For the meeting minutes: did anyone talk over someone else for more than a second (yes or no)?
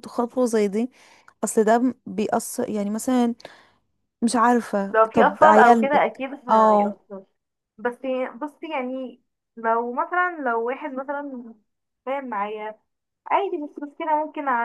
yes